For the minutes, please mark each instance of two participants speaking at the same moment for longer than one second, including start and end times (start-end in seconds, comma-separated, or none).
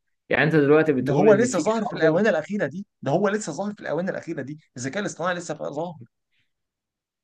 1.0-2.3